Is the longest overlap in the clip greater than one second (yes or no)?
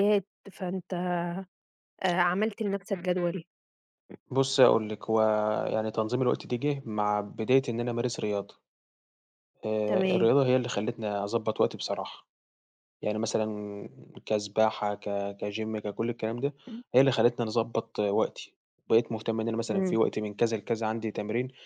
no